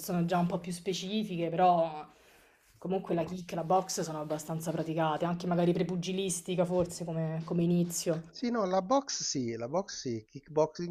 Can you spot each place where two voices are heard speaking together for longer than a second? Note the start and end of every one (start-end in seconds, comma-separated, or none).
none